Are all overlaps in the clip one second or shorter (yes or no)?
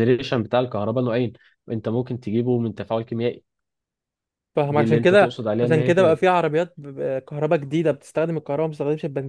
no